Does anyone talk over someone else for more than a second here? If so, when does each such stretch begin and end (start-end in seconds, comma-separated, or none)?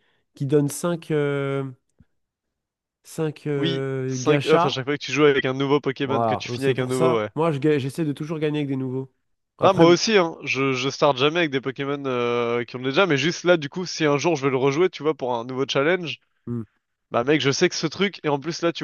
3.6-4.8, 6.0-7.3